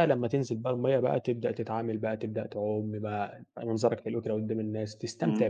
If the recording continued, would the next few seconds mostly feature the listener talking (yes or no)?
yes